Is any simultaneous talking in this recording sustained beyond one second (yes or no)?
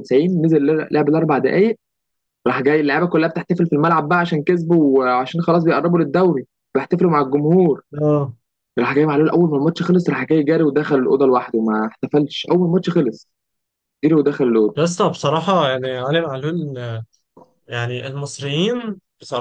no